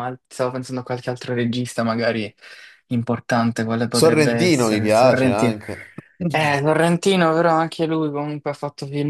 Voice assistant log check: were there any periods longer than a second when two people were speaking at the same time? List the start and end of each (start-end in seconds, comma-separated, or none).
3.9-5.5